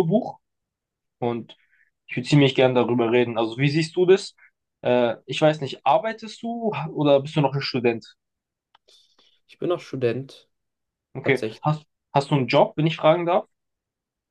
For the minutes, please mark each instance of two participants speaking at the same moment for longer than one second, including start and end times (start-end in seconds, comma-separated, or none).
none